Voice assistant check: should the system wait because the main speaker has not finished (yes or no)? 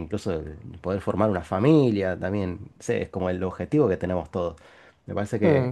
yes